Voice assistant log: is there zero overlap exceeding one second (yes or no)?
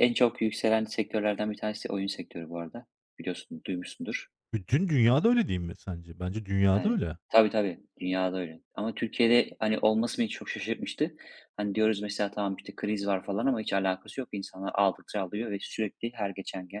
yes